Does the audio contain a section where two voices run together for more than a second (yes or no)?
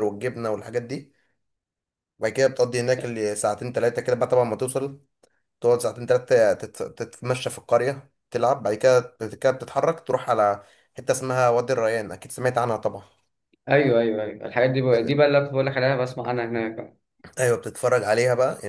no